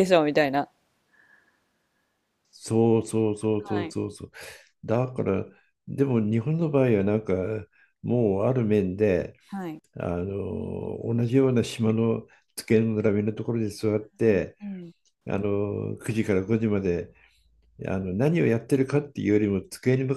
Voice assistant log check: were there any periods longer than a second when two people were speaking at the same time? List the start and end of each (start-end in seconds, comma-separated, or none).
none